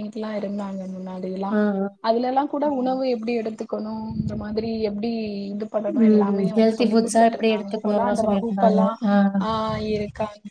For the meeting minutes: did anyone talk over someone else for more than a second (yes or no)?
yes